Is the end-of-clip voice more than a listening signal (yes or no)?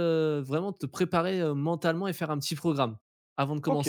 yes